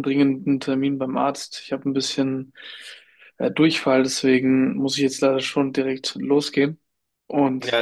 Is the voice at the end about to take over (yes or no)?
yes